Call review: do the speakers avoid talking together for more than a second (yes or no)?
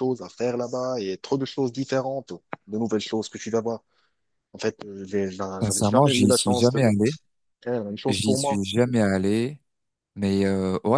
no